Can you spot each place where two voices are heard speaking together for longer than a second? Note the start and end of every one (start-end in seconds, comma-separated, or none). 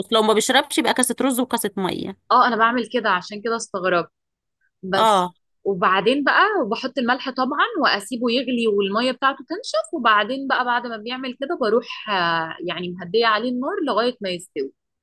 none